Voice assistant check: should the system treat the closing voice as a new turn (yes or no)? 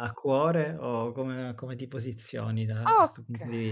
yes